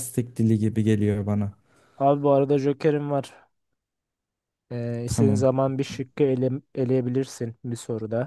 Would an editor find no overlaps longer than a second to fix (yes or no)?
yes